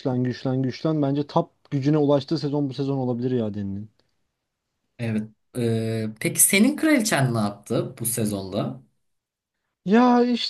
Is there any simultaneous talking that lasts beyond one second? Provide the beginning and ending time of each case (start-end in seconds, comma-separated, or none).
none